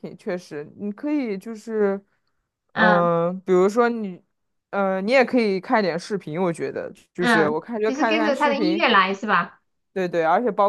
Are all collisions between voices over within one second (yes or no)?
no